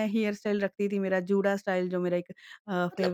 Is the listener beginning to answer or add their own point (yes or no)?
yes